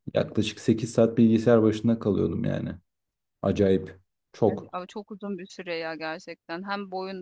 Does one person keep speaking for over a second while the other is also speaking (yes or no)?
no